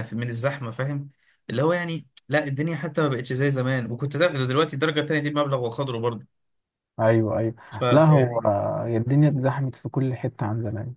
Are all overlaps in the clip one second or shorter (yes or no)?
yes